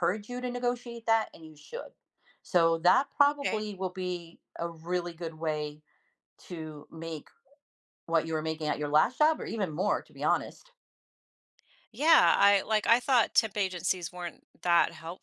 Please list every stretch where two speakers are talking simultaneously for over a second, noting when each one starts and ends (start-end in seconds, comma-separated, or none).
none